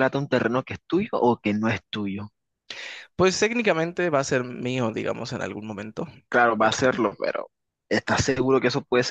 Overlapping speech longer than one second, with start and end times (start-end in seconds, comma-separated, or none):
none